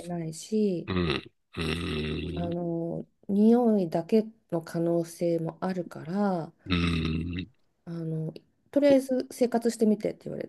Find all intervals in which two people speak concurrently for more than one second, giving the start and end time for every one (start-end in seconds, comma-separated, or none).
none